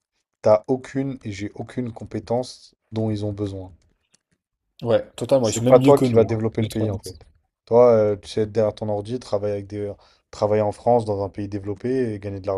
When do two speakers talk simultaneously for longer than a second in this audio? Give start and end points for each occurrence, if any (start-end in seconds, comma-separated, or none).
5.4-6.9